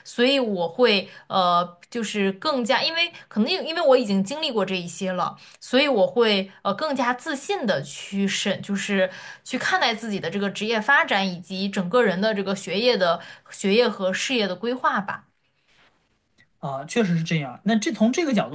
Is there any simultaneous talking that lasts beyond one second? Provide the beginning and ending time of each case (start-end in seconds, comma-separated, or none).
none